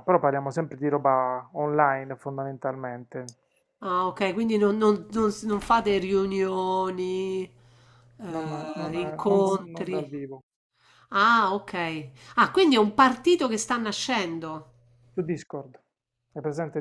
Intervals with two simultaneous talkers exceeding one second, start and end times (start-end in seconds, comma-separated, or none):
8.3-10.1